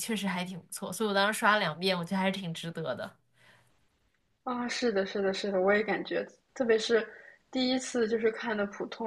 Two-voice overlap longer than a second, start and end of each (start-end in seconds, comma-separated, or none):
none